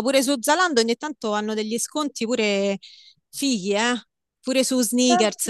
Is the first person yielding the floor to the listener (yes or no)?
yes